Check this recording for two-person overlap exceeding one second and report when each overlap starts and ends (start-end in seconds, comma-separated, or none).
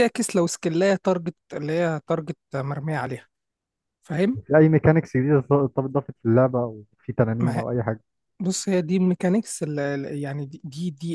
none